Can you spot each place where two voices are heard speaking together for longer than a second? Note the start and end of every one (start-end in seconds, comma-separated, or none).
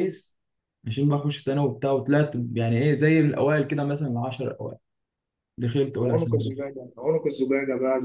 none